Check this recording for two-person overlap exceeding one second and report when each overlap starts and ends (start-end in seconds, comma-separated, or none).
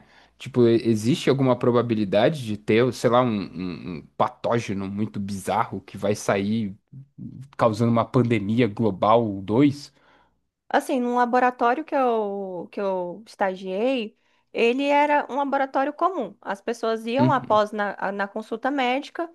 none